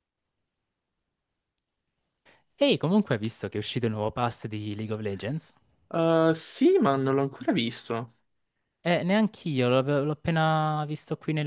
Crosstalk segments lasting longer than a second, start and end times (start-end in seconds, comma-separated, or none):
none